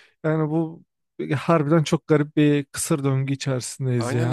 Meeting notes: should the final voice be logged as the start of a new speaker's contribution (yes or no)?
yes